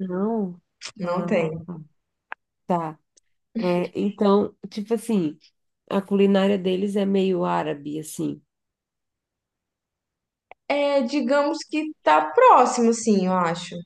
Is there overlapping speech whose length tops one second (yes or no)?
no